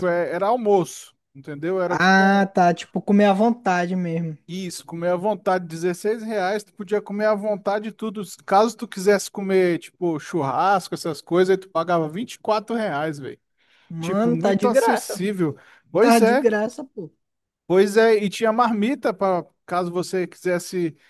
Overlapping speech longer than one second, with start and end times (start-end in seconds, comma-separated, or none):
14.0-15.2